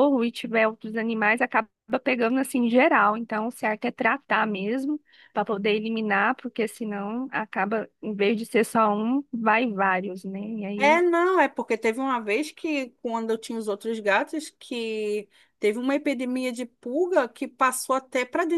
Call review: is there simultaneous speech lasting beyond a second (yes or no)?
no